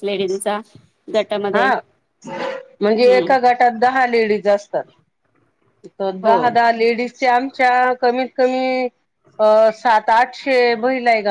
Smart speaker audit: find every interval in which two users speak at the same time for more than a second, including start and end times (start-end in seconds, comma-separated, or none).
none